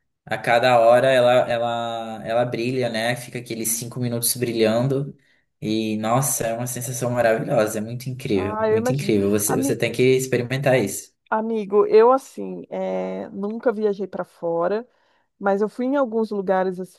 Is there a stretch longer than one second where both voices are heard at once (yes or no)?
yes